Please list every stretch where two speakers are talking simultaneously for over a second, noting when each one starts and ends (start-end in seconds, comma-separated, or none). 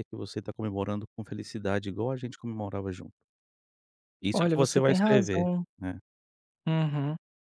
4.3-5.6